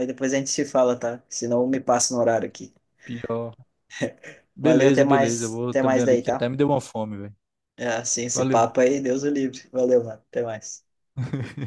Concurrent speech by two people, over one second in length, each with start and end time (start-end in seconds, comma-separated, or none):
4.6-6.5